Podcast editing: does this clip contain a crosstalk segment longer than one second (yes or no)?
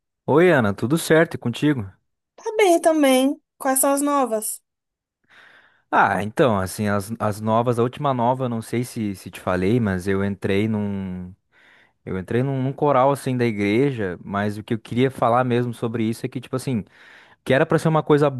no